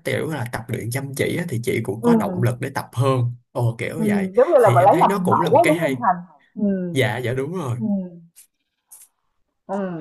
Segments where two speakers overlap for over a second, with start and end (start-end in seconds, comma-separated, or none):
4.0-6.0